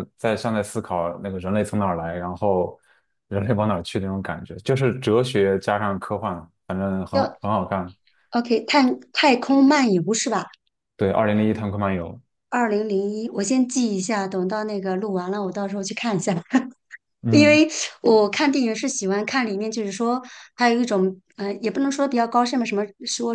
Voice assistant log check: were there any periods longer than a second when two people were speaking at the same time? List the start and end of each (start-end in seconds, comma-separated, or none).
none